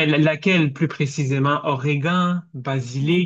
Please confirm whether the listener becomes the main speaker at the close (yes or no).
yes